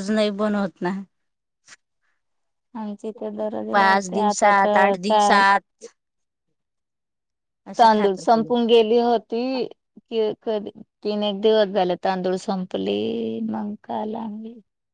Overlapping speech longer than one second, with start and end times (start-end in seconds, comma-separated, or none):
3.8-5.4